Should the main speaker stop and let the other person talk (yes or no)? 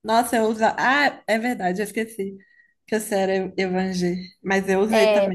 yes